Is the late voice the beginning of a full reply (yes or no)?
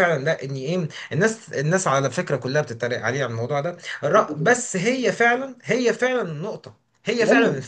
yes